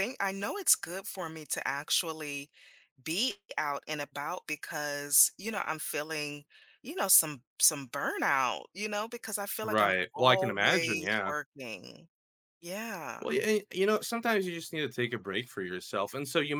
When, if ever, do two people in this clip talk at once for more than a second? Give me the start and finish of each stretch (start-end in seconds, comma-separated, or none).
9.6-11.3